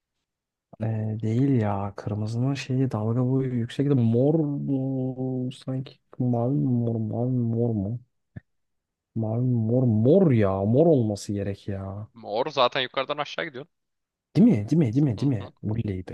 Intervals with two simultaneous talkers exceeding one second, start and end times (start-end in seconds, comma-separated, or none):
none